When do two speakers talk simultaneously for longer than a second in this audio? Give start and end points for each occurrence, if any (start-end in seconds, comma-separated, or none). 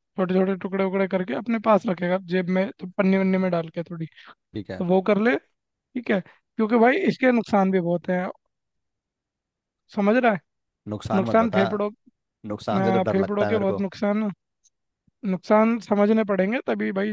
12.5-13.9